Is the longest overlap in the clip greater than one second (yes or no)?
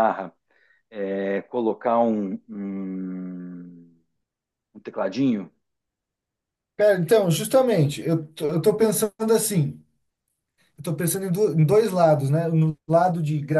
no